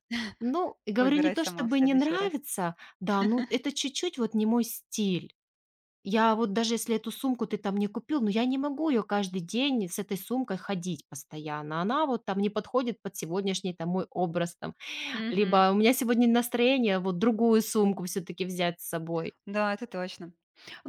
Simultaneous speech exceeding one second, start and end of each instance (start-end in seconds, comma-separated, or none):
1.0-2.3